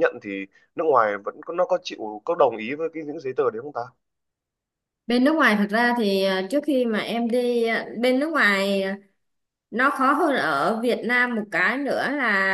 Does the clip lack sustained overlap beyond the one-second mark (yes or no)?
yes